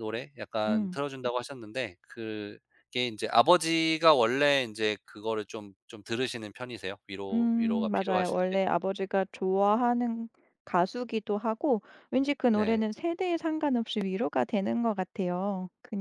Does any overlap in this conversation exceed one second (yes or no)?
yes